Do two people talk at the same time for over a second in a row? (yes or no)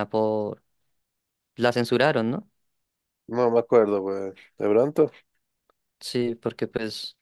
no